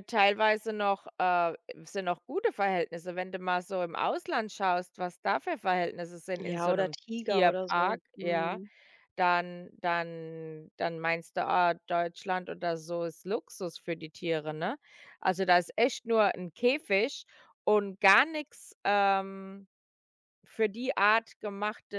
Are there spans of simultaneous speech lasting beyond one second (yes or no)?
yes